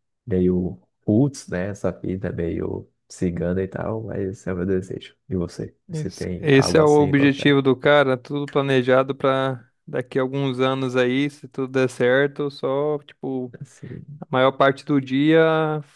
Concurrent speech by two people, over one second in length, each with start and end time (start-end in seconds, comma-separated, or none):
5.9-7.5